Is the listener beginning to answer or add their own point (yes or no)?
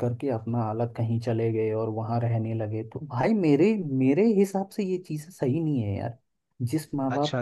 yes